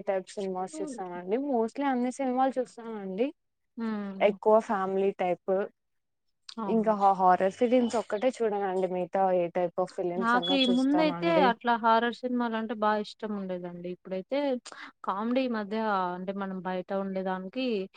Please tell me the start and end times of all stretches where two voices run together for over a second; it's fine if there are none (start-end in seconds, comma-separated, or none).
none